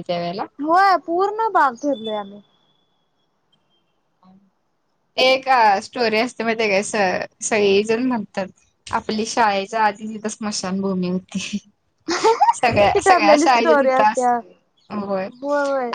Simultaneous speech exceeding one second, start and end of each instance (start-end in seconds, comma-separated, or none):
12.9-14.3